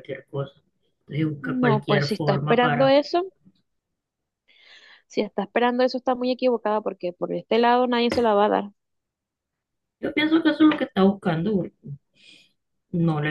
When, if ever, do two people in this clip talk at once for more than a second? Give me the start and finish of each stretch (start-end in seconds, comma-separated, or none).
1.6-2.9